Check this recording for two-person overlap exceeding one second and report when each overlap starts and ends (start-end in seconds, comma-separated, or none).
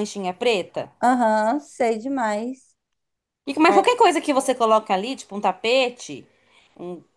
none